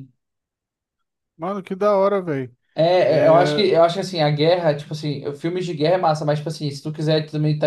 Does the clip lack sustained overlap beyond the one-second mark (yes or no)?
yes